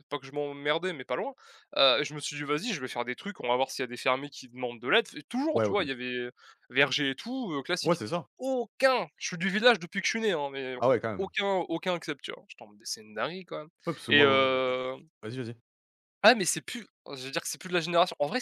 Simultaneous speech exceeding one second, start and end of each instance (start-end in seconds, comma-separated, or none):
none